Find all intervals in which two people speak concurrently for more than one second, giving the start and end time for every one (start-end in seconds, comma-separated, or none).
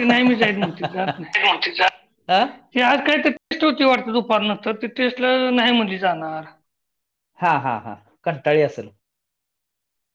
none